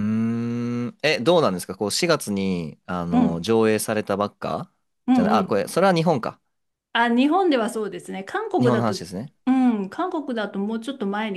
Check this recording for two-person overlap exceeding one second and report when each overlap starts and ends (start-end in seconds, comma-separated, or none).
none